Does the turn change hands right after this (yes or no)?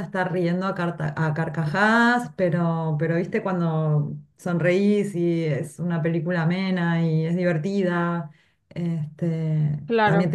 no